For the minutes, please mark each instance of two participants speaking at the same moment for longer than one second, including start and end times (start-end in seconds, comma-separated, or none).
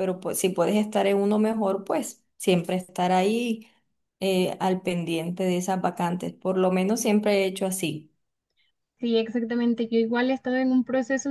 none